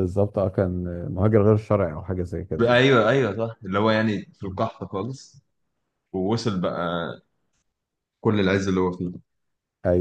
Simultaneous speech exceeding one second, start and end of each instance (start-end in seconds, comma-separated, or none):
none